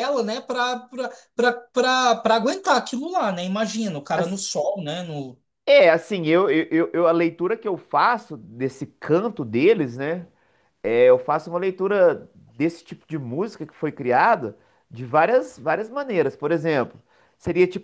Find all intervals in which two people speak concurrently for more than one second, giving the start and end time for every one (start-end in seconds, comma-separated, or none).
none